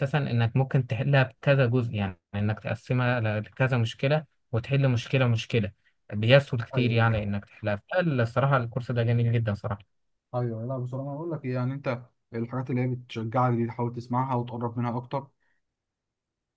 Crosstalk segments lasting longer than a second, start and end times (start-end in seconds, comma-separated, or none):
none